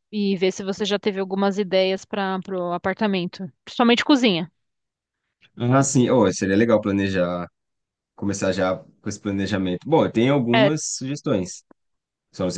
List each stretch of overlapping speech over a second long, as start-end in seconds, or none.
none